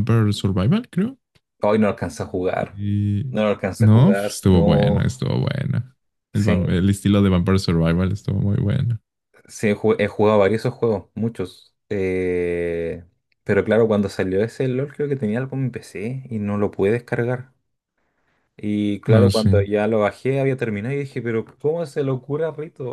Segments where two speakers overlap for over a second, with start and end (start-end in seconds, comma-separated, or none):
3.8-5.0